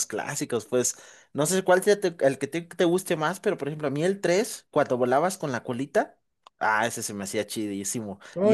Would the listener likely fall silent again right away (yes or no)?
no